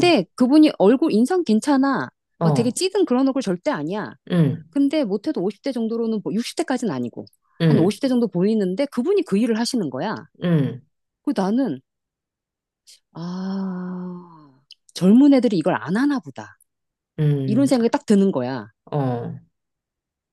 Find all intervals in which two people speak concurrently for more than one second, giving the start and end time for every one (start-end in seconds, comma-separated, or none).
none